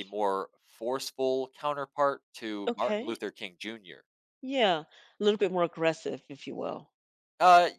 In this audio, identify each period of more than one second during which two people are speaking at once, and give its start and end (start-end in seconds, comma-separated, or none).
none